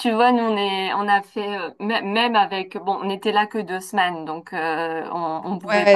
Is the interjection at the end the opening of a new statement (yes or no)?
no